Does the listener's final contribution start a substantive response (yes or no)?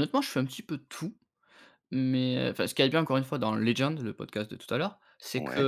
no